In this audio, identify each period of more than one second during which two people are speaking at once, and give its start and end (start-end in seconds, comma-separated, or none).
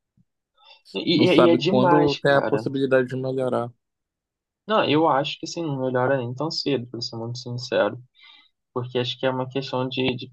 1.1-2.6